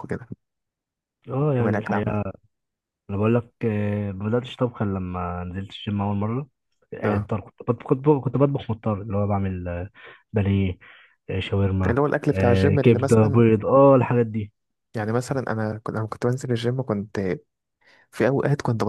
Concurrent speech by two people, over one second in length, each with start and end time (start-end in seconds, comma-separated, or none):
11.9-13.4